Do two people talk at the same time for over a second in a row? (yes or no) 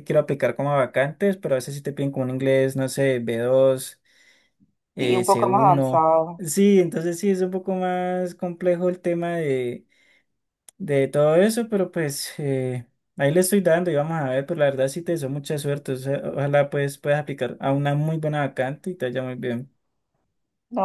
yes